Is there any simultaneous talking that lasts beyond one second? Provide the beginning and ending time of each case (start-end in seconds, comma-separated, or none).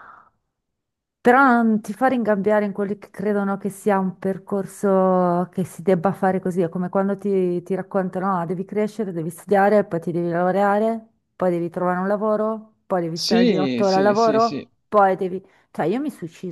13.1-14.7